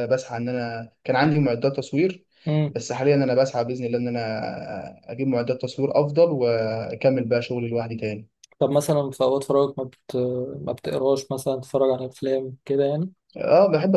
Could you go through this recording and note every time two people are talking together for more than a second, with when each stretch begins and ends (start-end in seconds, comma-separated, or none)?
none